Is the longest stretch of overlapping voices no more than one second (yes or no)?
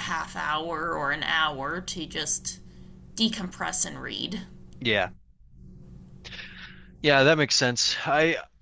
yes